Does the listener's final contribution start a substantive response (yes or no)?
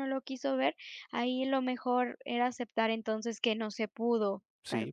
yes